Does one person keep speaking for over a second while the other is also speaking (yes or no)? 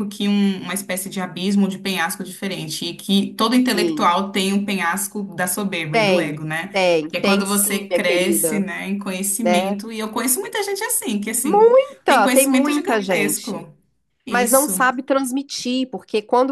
yes